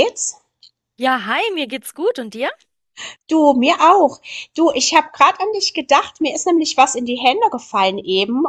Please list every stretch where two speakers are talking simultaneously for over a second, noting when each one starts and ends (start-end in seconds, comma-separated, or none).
none